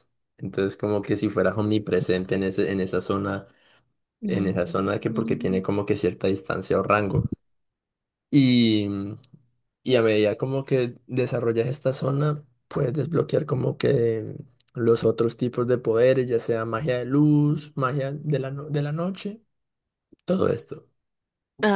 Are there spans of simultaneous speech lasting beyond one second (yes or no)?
yes